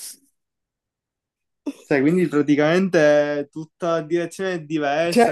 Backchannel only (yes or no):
no